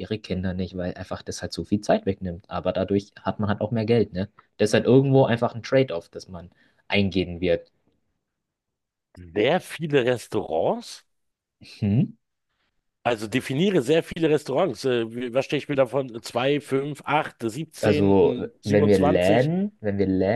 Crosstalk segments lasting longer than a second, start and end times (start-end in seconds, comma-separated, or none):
17.8-19.5